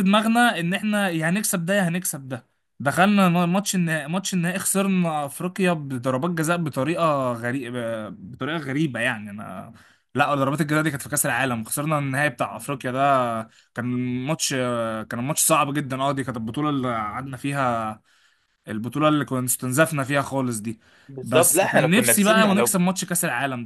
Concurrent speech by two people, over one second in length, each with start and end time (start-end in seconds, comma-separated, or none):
21.2-22.7